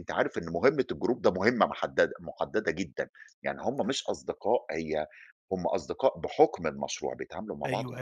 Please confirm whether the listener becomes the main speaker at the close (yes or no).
yes